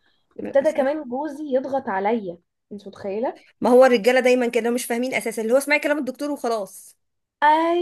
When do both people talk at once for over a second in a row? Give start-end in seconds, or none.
none